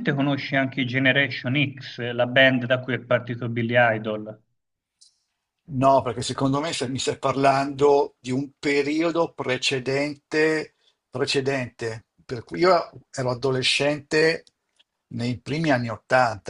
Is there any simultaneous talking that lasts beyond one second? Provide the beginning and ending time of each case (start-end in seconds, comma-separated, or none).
none